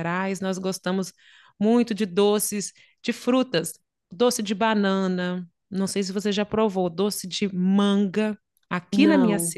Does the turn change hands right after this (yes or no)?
no